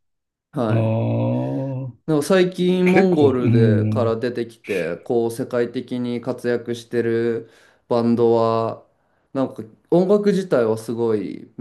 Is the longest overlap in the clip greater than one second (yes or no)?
yes